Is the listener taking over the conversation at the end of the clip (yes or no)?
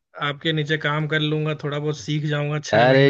yes